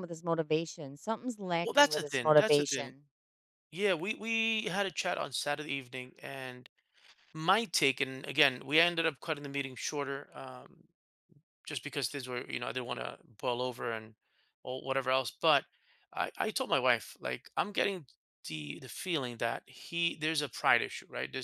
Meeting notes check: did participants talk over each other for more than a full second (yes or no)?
yes